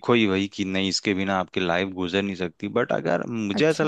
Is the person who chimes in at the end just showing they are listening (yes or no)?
yes